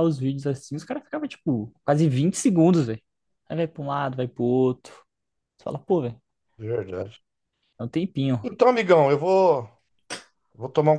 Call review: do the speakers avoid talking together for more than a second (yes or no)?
yes